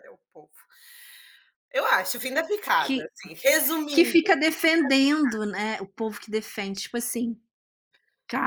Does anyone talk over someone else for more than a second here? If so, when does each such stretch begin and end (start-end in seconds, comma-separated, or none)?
none